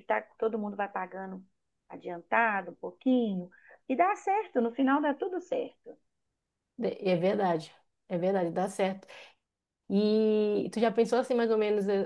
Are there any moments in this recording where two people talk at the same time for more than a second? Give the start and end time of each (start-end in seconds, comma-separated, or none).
none